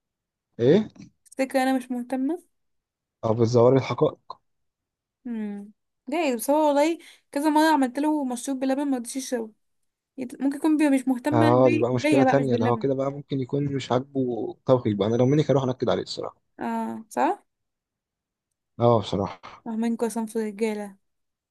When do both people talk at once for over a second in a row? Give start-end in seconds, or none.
11.3-12.9